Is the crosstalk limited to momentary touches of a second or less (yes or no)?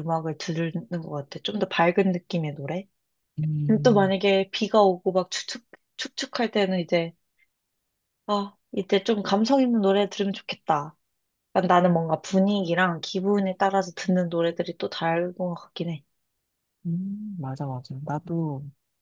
yes